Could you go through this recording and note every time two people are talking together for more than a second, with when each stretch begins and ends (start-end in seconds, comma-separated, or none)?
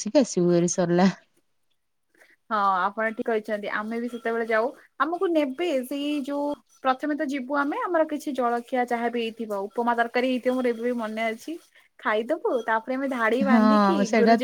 none